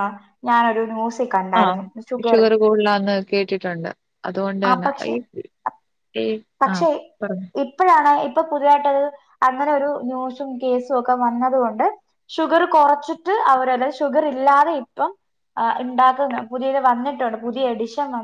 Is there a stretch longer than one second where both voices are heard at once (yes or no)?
no